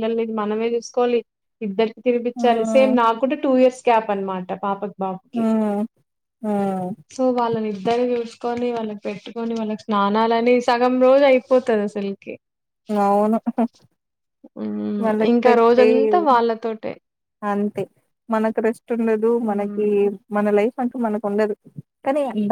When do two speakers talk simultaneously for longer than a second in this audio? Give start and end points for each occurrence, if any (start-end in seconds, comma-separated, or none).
none